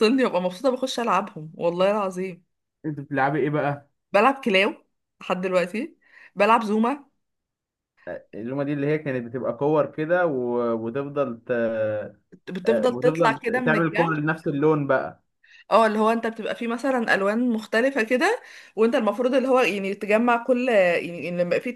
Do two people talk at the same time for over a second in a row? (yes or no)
yes